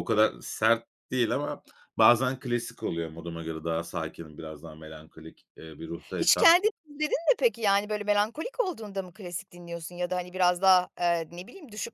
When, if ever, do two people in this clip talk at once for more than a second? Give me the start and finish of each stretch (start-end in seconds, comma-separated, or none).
none